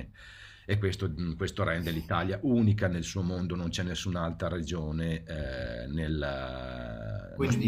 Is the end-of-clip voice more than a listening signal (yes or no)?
no